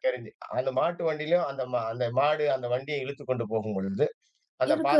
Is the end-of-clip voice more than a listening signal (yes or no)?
no